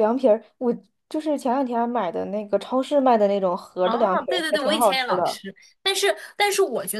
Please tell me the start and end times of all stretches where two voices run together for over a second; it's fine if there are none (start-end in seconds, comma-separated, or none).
3.8-5.4